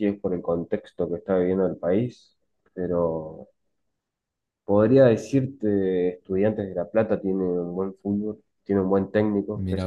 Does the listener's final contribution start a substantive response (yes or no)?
no